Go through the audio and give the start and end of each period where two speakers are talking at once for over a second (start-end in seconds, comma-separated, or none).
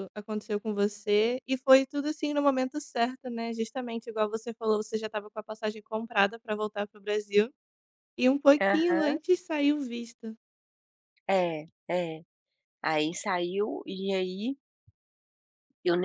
none